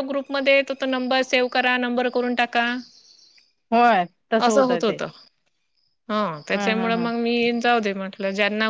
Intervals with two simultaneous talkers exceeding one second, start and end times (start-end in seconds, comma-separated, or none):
none